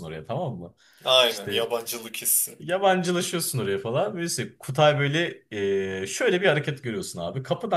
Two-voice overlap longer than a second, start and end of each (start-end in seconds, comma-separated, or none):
none